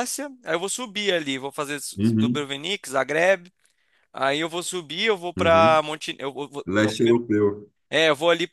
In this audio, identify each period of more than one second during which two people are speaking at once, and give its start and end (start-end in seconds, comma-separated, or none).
none